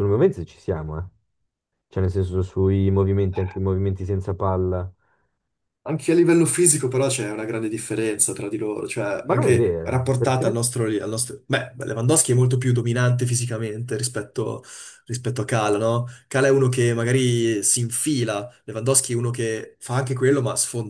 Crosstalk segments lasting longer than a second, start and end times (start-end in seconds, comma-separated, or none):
9.2-10.6